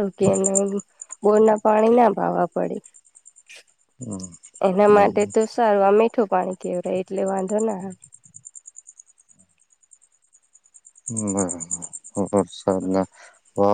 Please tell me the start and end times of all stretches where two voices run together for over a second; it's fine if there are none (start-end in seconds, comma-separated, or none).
none